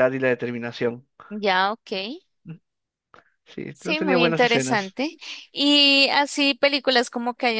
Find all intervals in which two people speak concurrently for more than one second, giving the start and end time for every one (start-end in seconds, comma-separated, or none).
3.7-5.0